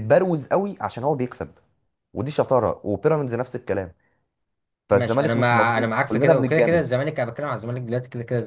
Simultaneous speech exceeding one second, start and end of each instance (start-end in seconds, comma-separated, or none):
4.9-6.9